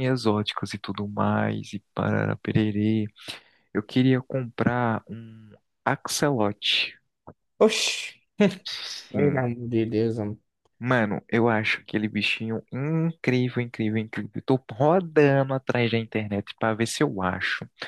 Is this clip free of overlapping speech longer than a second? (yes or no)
yes